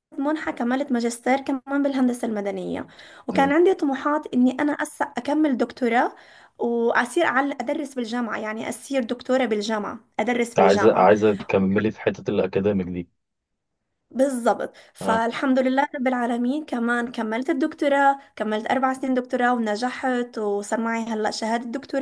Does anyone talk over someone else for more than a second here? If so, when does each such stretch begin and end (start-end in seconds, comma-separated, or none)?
none